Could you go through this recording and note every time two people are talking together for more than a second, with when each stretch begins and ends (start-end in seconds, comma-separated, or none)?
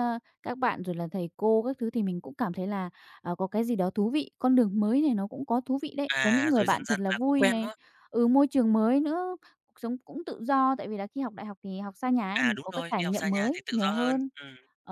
6.1-7.7, 12.3-14.3